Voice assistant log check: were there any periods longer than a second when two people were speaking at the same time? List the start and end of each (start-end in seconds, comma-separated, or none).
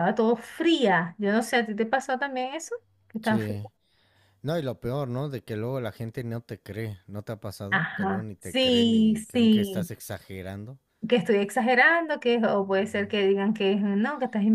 7.7-9.9